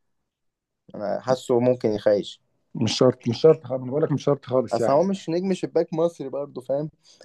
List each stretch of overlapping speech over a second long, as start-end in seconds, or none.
none